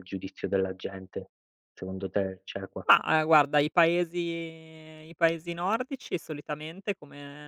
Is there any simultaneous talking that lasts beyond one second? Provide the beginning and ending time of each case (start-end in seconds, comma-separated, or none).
none